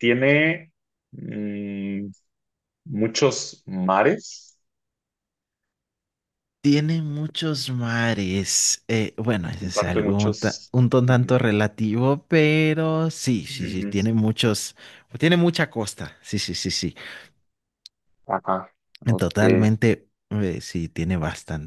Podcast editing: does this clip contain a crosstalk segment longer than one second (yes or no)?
yes